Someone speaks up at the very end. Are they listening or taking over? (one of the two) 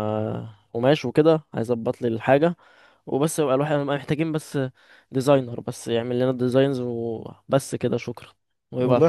taking over